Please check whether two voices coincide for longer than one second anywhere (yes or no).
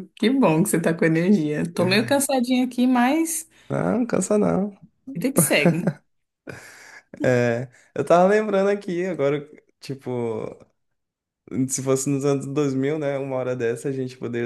no